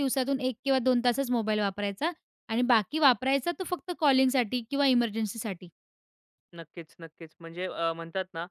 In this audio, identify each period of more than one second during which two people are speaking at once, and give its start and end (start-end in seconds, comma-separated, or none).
none